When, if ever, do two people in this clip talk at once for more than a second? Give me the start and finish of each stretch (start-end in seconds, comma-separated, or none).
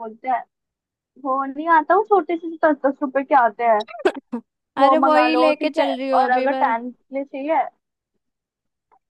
4.8-6.6